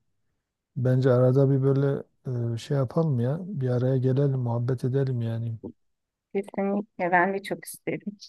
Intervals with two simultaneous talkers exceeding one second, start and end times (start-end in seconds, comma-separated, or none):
none